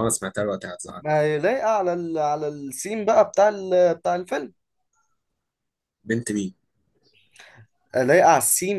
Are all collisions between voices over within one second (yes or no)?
yes